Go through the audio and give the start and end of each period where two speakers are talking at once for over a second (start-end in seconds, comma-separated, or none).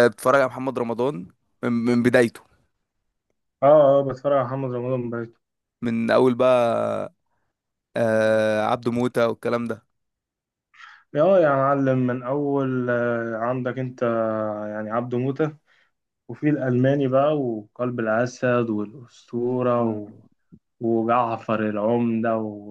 none